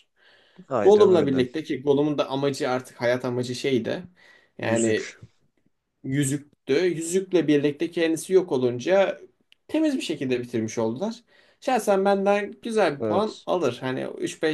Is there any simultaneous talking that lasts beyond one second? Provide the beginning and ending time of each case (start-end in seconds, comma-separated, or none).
none